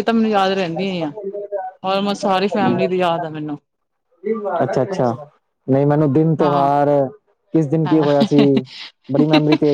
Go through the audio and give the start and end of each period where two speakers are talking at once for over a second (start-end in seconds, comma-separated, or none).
none